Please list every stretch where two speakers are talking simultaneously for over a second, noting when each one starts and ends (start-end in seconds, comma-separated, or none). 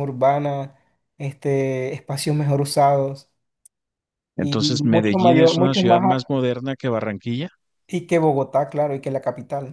4.4-6.3